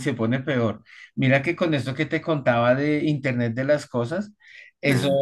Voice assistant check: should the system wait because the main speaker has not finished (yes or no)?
yes